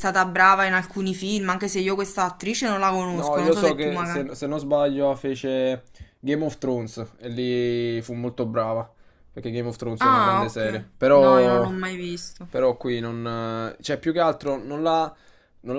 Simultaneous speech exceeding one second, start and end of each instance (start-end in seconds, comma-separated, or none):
3.1-4.4, 10.0-11.7